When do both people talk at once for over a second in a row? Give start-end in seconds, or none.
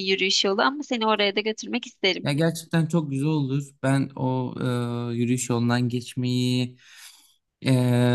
none